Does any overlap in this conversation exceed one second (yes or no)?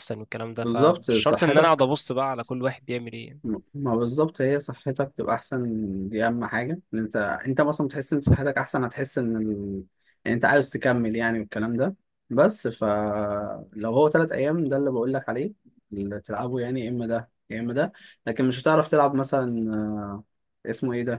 yes